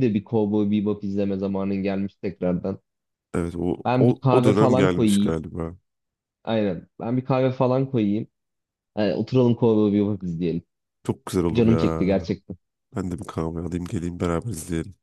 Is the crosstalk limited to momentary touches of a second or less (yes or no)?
no